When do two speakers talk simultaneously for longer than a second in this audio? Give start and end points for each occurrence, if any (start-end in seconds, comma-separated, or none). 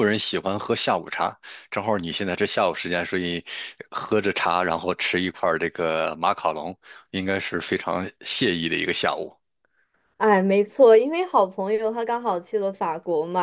none